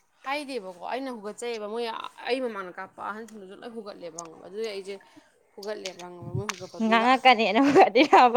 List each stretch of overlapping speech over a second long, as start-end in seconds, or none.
none